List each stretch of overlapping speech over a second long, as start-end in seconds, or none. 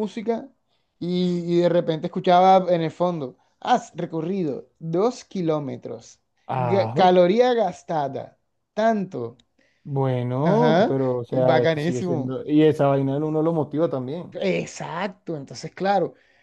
10.4-12.4